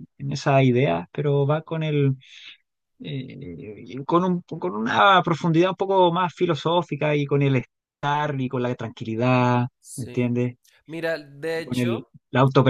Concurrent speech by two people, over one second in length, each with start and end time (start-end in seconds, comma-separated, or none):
none